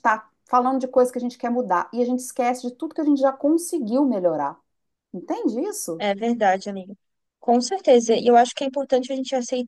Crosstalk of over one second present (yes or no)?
no